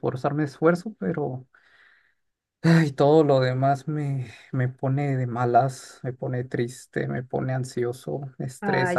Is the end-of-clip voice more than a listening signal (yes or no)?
yes